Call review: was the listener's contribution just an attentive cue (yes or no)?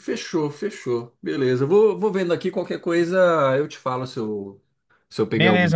no